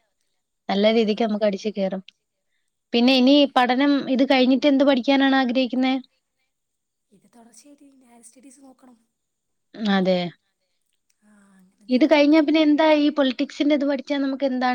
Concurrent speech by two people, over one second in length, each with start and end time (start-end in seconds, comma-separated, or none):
11.9-14.2